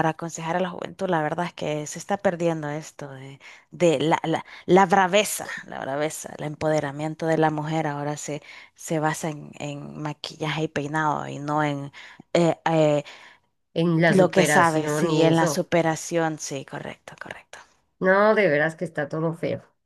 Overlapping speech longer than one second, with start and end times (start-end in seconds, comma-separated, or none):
14.1-15.7